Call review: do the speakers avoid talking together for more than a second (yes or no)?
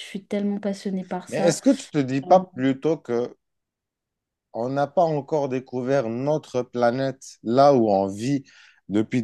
yes